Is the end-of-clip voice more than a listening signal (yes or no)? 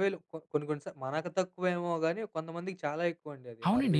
yes